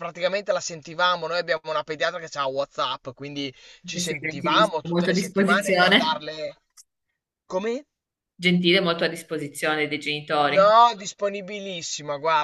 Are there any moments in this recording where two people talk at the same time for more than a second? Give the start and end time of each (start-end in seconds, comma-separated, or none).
3.9-6.3